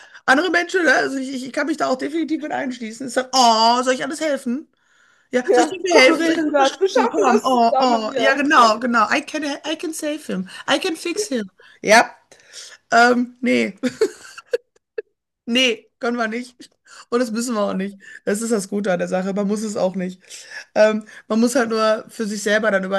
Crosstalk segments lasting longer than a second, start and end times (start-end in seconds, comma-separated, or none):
5.4-8.7